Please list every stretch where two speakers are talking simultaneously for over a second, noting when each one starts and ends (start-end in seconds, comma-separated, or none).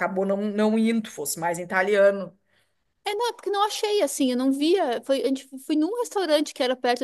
none